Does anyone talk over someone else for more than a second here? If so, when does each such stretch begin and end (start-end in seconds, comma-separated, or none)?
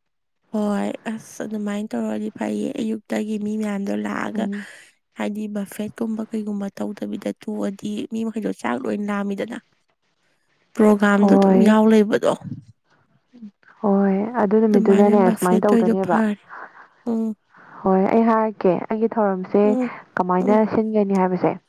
14.7-16.2